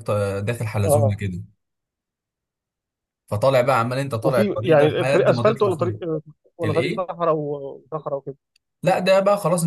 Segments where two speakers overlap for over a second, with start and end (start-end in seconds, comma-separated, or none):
4.2-6.0